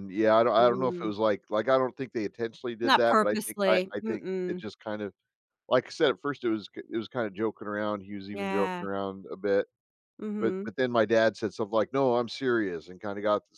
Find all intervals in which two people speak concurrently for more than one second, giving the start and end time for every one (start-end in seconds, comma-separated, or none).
2.8-4.6